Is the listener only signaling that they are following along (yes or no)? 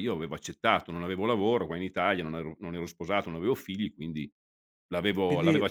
yes